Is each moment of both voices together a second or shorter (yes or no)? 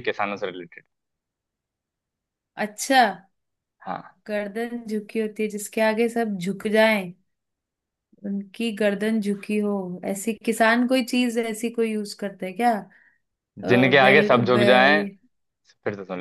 no